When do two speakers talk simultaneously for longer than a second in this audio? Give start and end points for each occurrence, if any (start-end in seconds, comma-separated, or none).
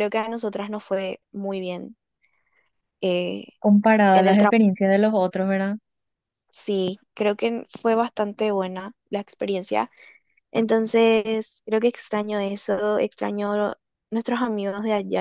none